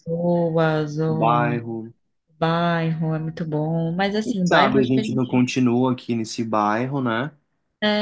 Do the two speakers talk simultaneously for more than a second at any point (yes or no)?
yes